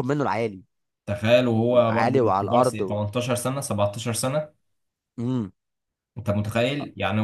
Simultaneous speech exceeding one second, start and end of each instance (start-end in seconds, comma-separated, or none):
1.7-3.0